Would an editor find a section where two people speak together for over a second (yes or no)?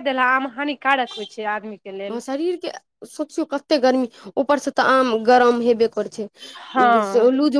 no